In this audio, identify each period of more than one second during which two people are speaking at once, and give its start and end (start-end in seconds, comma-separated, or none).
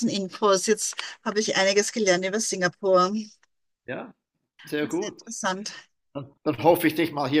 none